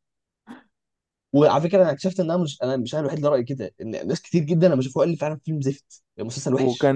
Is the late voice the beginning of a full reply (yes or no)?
yes